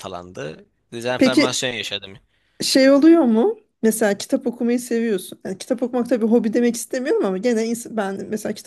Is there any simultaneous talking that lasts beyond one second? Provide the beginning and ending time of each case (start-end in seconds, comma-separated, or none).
none